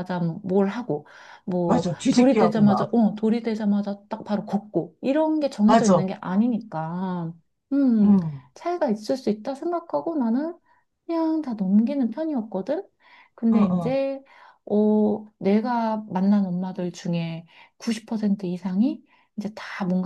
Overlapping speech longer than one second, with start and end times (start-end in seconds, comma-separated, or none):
1.7-3.0